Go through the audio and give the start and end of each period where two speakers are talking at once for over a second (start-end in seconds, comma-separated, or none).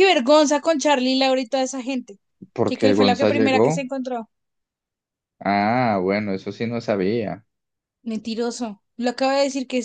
2.6-3.9